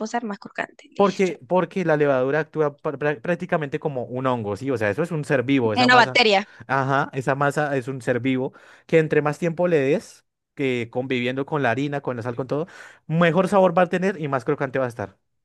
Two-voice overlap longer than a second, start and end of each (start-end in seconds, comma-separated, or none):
none